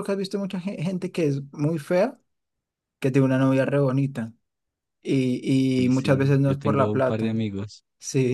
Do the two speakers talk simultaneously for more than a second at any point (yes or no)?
yes